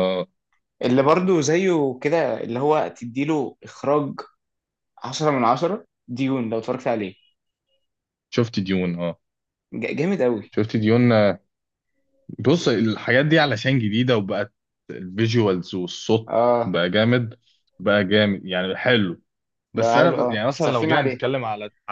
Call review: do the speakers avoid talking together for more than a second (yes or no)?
no